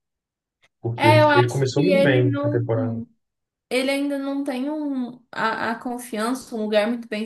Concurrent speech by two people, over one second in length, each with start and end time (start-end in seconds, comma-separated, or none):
1.0-2.6